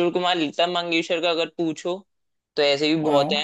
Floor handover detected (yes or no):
no